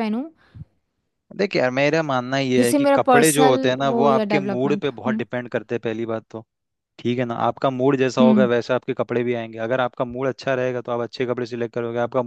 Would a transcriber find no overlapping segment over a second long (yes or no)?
no